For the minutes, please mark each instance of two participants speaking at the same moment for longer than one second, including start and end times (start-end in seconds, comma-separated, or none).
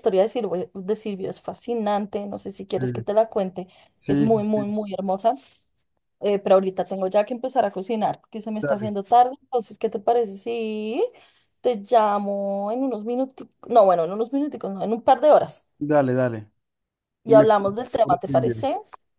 17.3-18.7